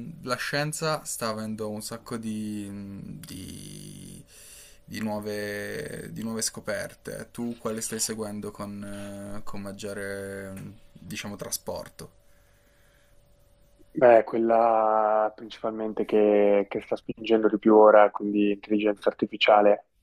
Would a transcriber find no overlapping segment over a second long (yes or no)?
yes